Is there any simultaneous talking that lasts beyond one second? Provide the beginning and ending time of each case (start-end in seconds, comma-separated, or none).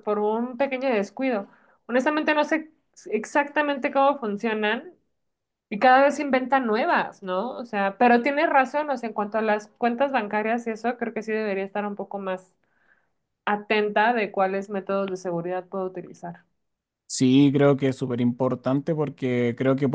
none